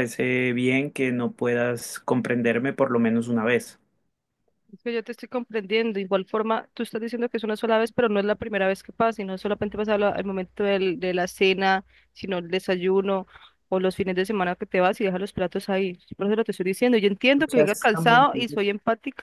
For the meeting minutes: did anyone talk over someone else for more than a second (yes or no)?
yes